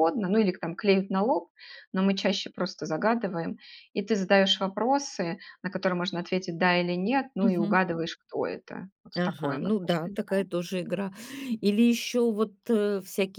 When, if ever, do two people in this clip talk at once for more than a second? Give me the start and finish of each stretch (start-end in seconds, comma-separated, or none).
9.2-10.5